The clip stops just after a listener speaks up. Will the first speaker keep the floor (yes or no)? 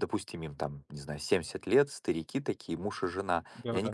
yes